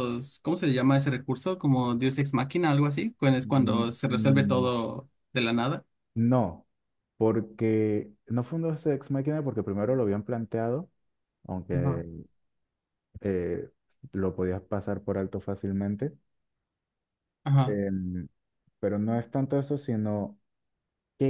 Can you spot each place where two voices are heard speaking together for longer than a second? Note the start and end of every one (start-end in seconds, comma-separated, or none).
3.4-4.7